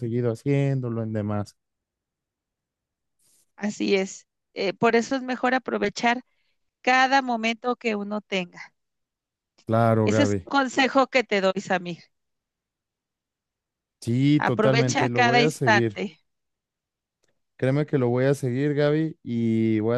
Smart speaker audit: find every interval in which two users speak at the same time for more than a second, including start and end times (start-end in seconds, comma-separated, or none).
14.5-16.0